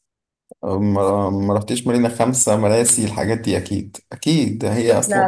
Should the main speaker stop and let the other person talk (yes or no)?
no